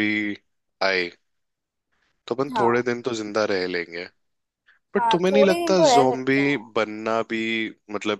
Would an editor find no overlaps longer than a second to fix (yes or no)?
no